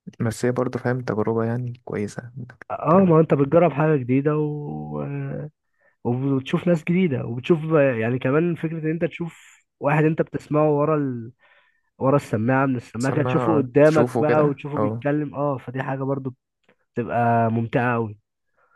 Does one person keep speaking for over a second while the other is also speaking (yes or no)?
yes